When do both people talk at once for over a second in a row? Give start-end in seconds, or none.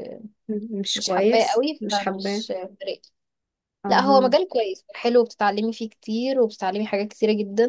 0.9-2.4